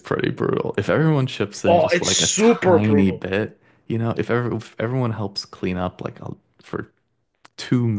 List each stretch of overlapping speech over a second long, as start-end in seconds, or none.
1.7-3.3